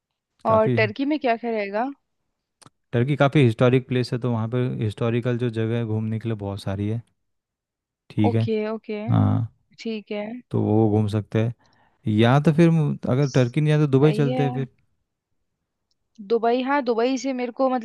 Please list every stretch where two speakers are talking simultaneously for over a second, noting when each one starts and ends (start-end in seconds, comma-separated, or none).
13.2-14.7